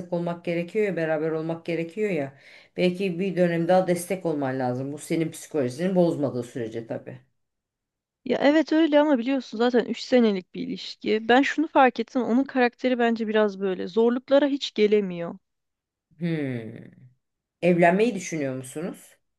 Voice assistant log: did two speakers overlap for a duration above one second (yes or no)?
no